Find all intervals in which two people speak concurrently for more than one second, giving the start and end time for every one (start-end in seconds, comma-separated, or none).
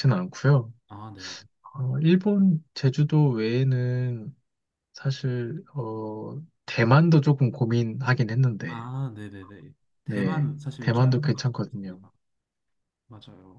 10.1-12.0